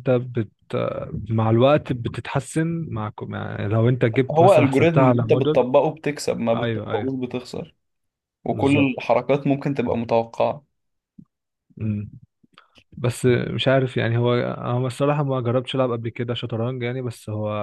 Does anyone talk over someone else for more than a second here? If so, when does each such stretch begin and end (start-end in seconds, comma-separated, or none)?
4.3-5.6